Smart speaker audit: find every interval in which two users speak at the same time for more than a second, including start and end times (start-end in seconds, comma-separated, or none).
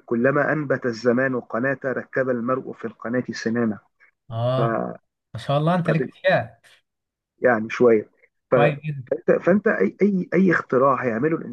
none